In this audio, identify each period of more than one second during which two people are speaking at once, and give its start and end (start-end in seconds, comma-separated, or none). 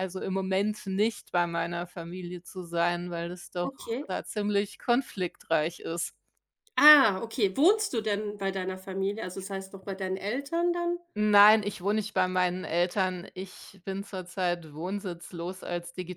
none